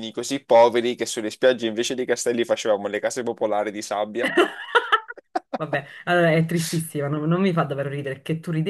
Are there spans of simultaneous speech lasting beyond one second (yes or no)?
no